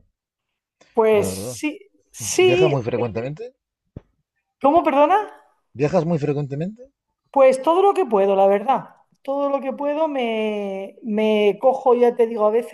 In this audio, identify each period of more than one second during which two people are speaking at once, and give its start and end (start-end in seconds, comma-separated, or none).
none